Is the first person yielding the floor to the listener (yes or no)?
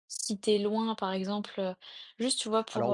no